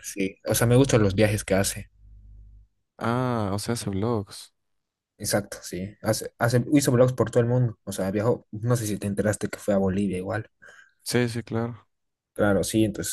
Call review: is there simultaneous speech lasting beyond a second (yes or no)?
no